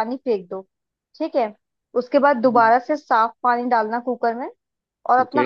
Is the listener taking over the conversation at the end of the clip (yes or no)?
no